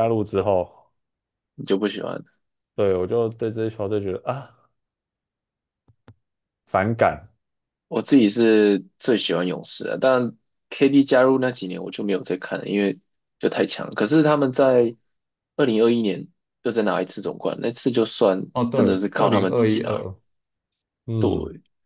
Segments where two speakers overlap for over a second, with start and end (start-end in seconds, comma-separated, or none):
18.5-20.0